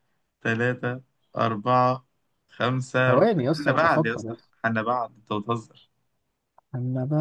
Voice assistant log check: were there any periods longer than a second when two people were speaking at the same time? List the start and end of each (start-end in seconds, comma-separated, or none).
3.0-4.5